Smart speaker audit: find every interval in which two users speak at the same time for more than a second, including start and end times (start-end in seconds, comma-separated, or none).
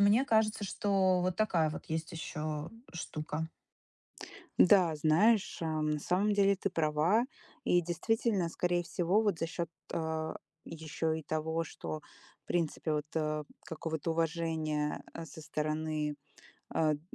none